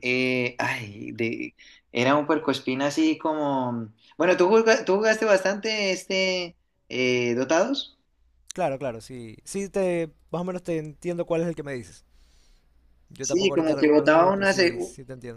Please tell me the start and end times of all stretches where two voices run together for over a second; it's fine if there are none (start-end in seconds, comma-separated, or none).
13.2-14.5